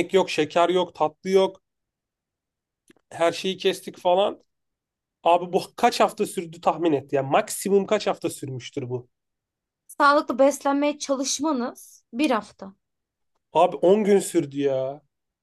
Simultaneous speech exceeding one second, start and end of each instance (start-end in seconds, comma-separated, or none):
none